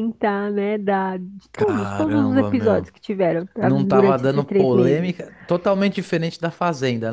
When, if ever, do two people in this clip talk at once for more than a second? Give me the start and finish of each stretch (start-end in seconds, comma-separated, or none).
1.5-2.9, 3.6-5.2